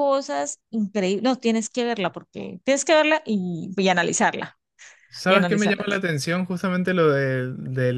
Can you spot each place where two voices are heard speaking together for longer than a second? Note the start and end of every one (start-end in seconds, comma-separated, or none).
none